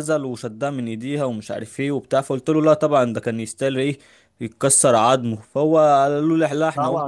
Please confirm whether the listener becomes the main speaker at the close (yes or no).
yes